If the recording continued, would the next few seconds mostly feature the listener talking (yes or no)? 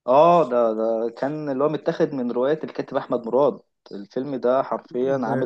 yes